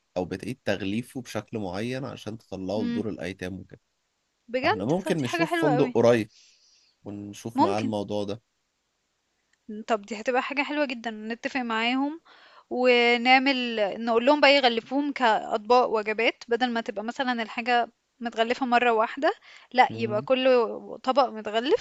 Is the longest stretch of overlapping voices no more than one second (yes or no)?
no